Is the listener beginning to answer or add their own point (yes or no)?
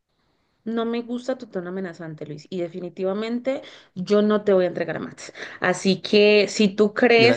no